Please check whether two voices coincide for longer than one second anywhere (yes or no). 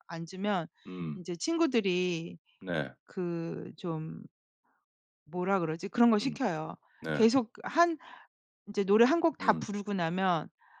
no